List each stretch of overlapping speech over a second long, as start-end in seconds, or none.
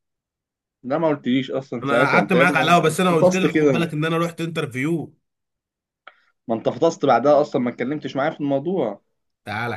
1.8-3.9